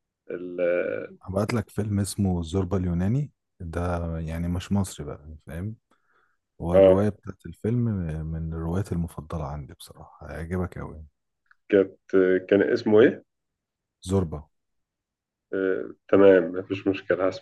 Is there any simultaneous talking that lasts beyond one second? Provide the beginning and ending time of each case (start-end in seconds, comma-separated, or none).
none